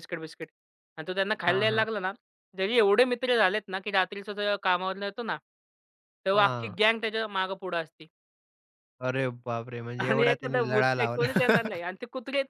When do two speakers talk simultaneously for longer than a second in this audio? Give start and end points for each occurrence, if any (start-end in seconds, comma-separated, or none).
10.0-11.4